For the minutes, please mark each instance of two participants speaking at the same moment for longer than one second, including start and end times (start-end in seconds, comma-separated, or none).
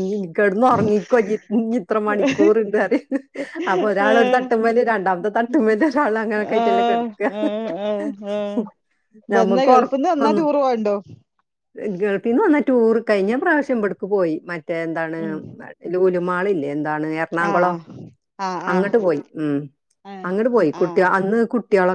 none